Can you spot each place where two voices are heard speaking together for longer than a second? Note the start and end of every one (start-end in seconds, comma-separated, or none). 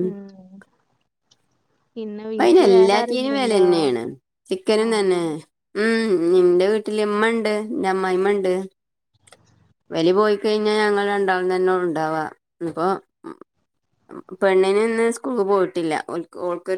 2.4-3.6